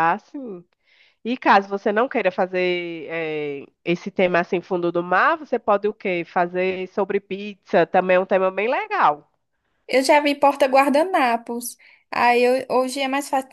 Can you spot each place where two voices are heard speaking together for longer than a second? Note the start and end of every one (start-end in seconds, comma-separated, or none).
none